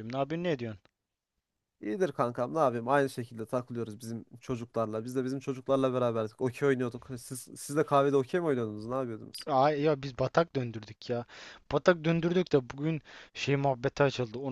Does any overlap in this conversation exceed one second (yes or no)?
no